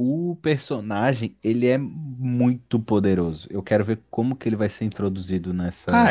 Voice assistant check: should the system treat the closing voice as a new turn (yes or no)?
yes